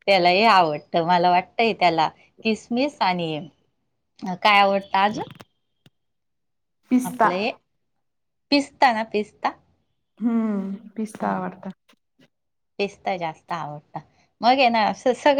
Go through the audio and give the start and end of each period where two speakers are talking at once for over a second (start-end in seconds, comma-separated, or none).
none